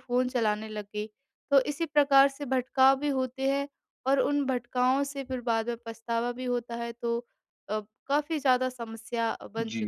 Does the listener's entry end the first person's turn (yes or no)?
yes